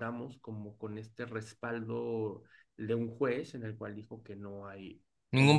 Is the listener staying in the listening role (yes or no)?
yes